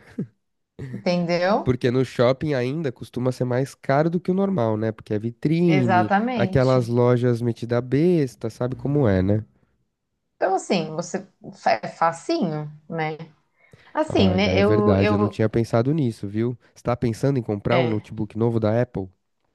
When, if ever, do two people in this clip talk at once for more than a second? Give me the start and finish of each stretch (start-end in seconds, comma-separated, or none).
5.7-7.0, 14.1-15.4